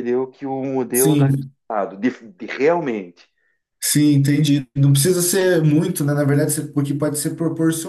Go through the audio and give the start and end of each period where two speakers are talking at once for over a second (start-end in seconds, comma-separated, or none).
none